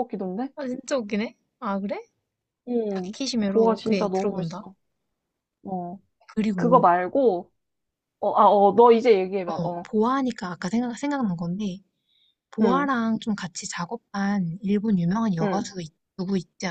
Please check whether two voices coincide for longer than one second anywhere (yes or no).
yes